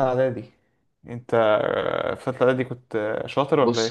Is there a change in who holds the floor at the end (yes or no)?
yes